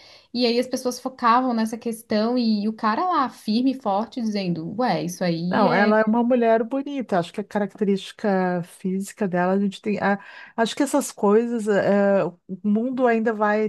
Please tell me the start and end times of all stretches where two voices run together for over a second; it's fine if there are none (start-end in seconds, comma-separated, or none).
none